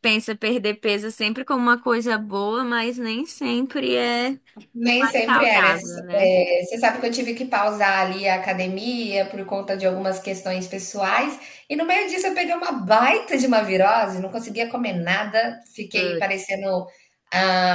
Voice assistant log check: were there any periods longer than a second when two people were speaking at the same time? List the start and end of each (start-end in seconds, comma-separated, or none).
4.8-6.3